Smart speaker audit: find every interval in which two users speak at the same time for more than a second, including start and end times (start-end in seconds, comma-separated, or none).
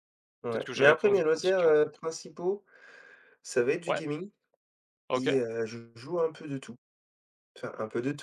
0.5-1.9